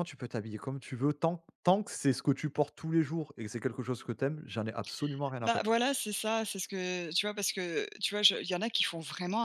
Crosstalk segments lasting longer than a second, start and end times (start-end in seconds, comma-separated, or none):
none